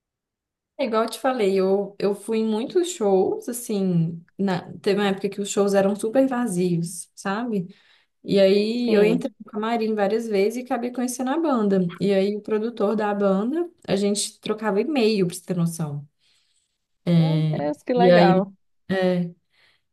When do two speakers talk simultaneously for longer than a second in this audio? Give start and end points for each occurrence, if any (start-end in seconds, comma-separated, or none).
none